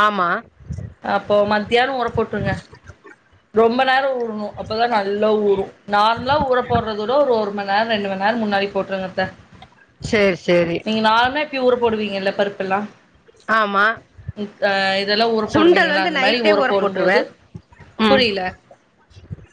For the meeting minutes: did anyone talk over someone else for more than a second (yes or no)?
yes